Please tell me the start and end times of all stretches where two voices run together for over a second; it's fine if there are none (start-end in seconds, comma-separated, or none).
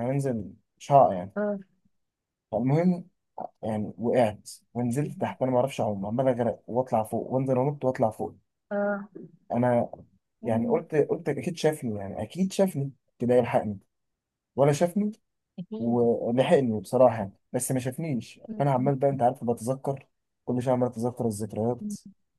none